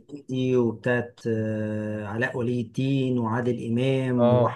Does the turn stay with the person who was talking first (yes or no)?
yes